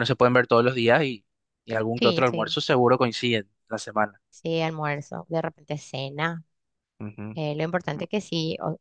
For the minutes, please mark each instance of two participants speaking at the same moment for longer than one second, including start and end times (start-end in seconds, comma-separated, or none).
none